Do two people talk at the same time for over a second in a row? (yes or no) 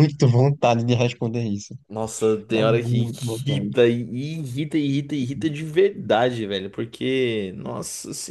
yes